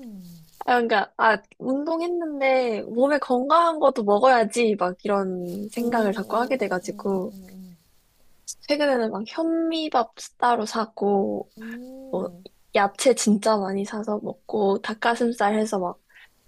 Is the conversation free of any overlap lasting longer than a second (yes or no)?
no